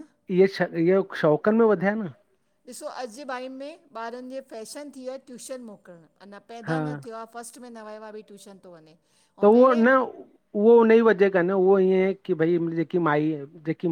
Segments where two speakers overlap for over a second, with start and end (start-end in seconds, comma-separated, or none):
none